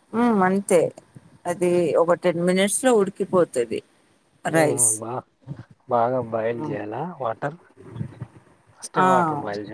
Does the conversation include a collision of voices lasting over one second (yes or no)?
no